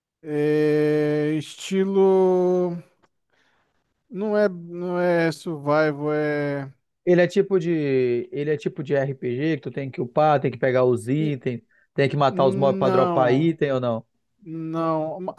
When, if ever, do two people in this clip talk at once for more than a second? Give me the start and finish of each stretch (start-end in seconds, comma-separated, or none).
12.3-13.5